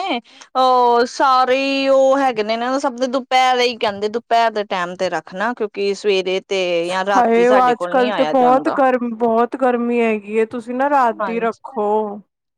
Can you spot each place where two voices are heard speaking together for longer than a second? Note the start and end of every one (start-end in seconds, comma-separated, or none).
7.2-8.8